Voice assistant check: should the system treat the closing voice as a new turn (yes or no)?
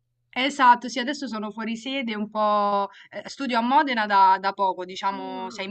no